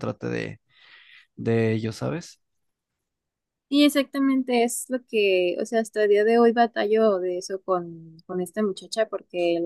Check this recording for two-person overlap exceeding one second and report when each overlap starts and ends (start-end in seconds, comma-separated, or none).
none